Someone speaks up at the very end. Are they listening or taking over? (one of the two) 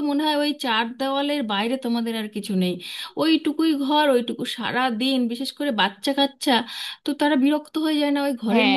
taking over